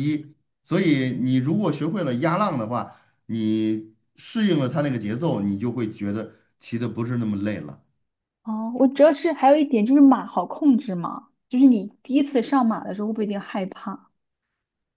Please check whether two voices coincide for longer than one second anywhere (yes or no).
no